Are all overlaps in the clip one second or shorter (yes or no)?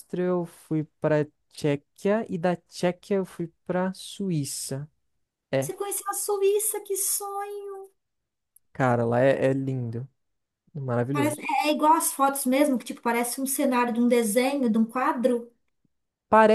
yes